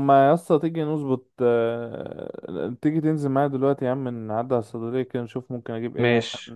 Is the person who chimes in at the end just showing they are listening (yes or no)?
no